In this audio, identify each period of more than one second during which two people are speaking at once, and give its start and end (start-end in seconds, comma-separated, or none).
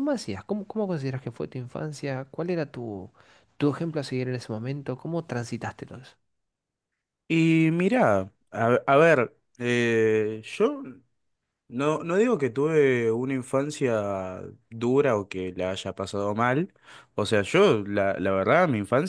none